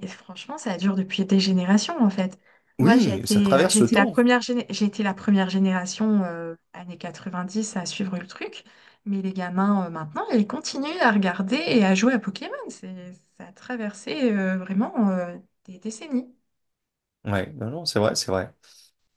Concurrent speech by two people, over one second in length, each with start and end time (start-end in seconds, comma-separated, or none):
2.8-4.2